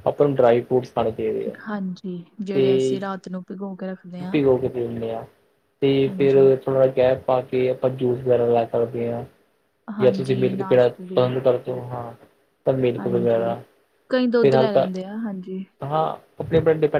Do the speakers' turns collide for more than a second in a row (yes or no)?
yes